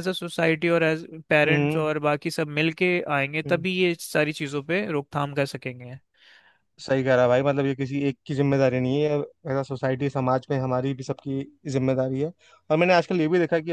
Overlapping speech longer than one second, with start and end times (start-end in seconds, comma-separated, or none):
none